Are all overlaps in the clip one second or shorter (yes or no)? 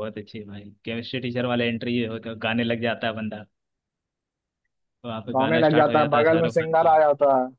no